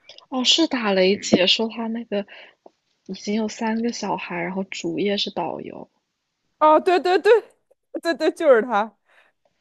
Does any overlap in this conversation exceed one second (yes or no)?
no